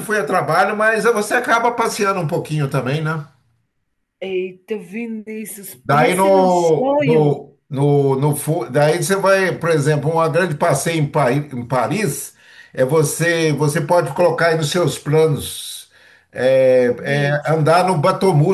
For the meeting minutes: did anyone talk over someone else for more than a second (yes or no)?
yes